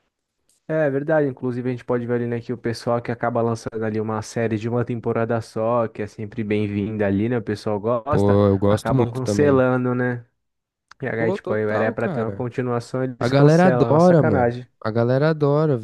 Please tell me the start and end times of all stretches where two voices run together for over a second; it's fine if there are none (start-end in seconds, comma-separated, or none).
8.1-9.7, 11.2-12.5, 13.2-14.7